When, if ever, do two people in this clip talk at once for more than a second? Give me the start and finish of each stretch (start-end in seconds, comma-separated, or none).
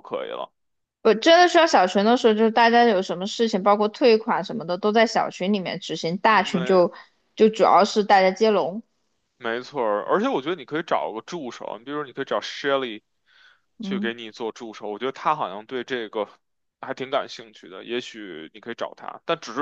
none